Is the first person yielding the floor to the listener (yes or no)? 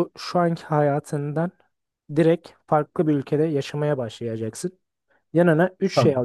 no